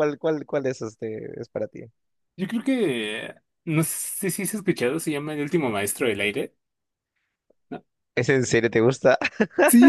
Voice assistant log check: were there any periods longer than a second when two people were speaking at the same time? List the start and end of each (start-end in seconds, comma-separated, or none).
none